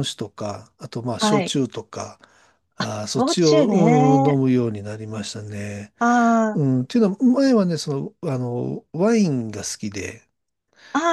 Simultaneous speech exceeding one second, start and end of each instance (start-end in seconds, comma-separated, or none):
2.8-4.4